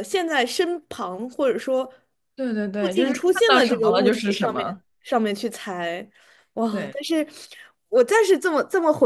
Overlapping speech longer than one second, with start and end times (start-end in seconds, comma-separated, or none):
2.8-4.8